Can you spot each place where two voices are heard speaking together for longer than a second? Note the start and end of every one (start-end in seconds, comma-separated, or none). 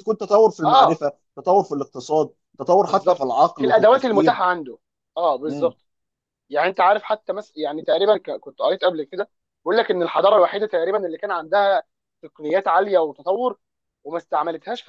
2.9-4.4